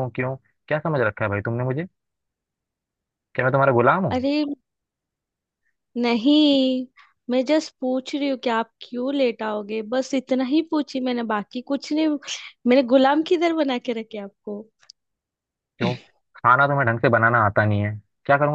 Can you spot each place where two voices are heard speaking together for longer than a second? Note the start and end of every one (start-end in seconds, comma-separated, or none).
none